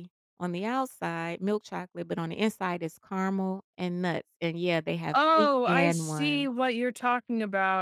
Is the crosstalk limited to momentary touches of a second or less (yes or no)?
no